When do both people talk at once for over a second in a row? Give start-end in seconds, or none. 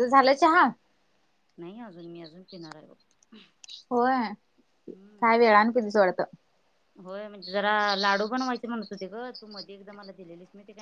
none